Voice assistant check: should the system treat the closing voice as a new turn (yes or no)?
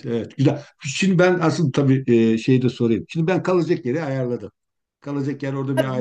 yes